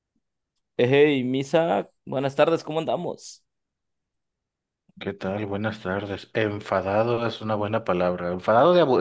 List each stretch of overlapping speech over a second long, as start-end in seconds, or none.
none